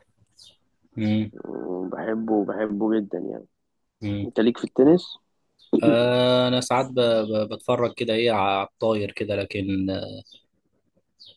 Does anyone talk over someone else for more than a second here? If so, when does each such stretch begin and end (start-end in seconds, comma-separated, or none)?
none